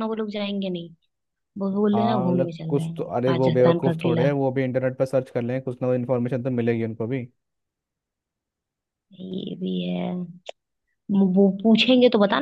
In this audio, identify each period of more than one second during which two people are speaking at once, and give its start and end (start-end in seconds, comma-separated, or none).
1.9-4.3